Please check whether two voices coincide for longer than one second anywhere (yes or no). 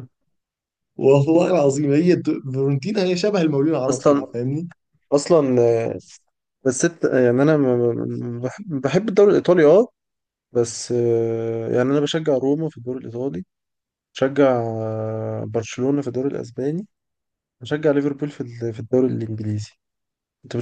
no